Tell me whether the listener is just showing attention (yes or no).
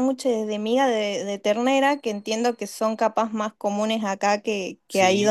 no